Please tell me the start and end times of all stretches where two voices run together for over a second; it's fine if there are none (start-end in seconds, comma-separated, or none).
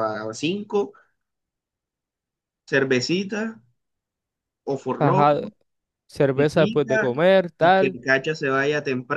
6.3-8.0